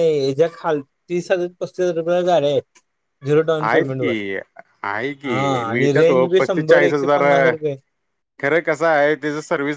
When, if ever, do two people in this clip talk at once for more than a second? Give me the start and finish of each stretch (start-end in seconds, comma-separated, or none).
5.2-7.5